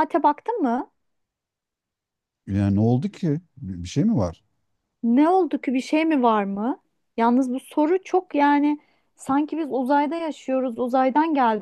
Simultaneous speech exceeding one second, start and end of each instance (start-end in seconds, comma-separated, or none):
none